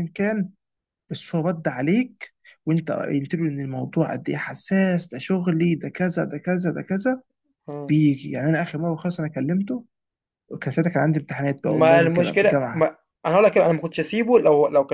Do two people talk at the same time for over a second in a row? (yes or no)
yes